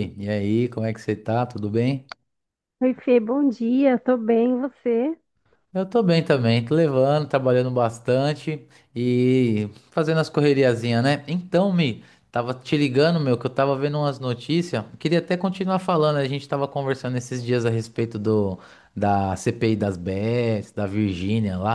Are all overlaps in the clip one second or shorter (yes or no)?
yes